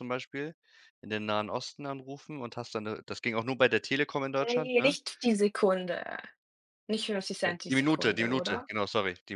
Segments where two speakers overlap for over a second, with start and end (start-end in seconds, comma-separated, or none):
7.4-8.7